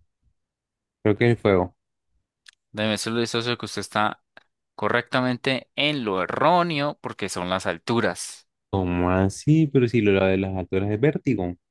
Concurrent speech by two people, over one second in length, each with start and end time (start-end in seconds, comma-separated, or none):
none